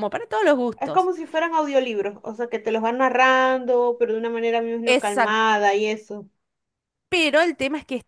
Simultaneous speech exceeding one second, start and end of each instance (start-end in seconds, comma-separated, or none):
none